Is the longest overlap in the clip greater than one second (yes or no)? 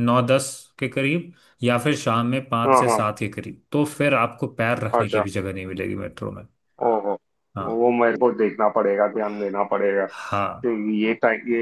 no